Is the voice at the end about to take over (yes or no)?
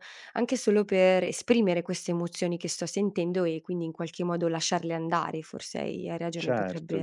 yes